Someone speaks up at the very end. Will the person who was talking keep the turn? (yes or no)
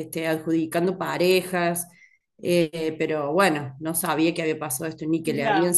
no